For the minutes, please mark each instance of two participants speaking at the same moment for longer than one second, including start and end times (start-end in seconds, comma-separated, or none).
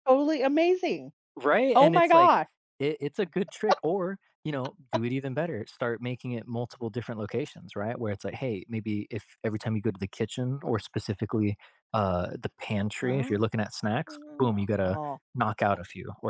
none